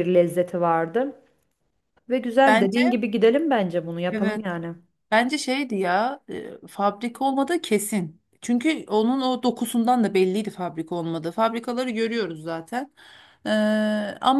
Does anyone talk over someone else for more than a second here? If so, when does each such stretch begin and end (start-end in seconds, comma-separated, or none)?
none